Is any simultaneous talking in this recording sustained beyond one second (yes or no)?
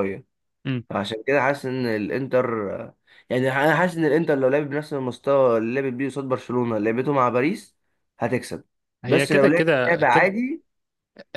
yes